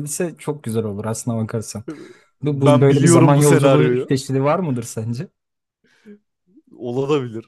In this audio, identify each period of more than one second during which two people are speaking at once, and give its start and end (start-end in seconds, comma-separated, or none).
2.4-4.2